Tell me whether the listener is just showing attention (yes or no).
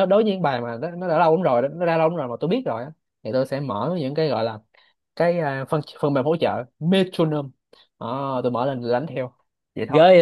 no